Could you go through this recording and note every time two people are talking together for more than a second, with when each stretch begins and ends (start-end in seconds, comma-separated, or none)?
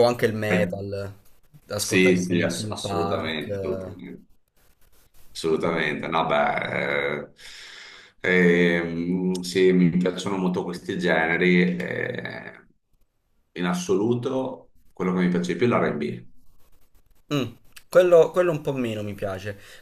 1.7-4.0